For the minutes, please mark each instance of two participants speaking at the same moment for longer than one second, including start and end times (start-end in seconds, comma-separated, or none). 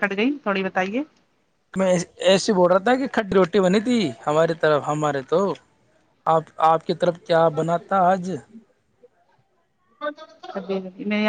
none